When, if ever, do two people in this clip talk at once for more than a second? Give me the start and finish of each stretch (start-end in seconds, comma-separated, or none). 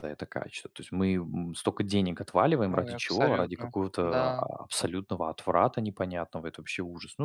2.7-4.4